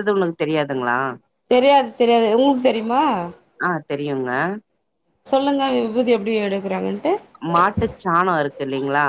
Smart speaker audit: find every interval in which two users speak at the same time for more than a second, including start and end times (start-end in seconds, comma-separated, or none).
none